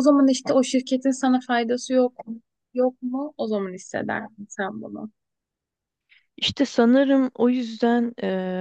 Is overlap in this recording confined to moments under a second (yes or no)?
yes